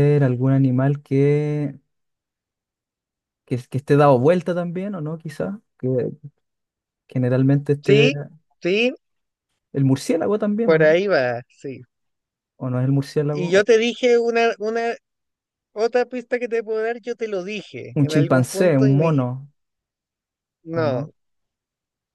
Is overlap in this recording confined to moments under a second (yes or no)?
no